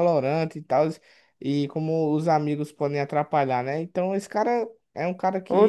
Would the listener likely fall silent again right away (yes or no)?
no